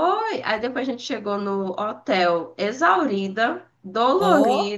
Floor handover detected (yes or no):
no